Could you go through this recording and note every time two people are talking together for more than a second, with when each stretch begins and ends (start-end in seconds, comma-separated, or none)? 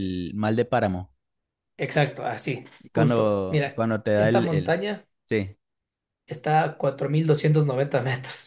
2.9-4.8